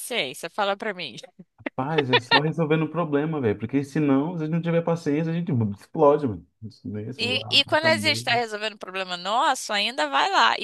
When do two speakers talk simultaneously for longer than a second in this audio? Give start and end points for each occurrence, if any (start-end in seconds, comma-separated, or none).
7.2-8.4